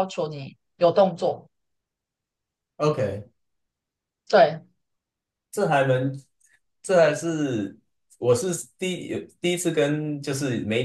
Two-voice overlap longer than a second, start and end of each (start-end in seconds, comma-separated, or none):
none